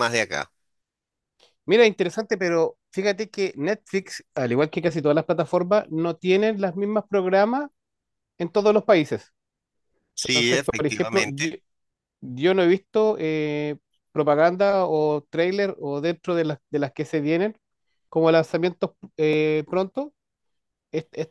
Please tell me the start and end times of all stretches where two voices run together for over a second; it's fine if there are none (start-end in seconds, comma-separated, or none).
10.2-11.5